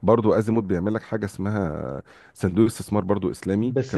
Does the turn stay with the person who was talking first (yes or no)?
no